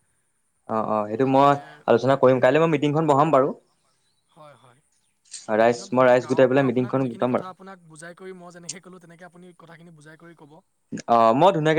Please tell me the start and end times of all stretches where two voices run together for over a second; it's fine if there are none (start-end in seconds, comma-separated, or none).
5.6-7.5